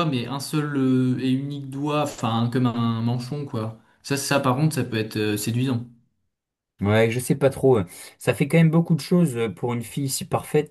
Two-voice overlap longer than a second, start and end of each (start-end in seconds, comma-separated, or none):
none